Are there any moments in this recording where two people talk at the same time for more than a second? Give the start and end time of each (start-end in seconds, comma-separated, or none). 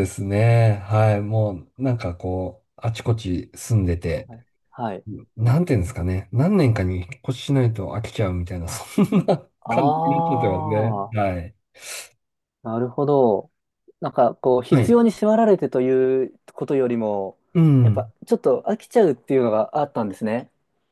9.7-11.3